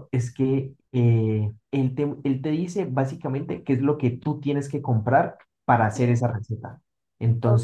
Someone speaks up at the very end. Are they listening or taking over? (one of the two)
listening